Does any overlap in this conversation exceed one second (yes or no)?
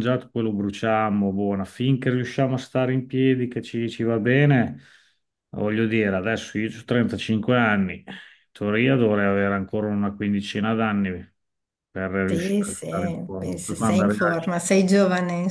yes